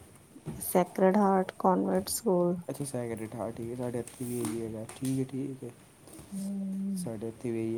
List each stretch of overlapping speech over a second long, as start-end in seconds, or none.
none